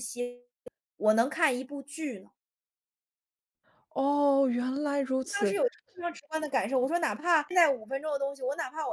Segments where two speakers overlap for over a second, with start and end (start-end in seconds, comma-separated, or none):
none